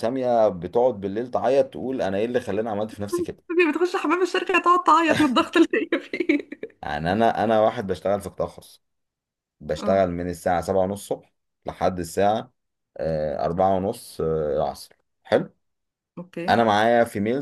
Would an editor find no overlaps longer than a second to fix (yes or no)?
yes